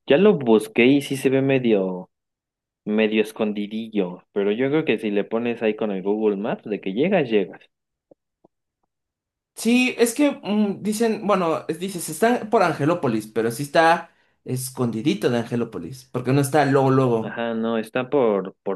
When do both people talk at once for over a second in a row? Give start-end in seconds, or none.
none